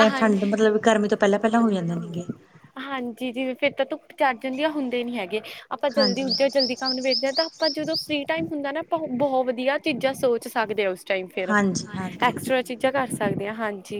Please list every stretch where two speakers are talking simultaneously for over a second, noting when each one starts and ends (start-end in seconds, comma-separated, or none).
none